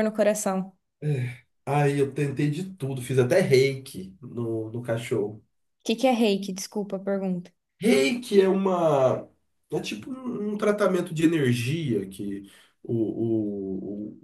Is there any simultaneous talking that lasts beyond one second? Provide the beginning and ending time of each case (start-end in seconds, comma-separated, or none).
none